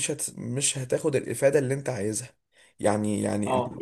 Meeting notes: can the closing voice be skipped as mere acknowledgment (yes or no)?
yes